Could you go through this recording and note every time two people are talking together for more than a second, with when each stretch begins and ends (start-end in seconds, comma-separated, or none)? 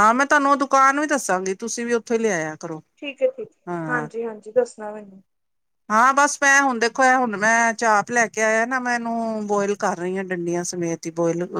none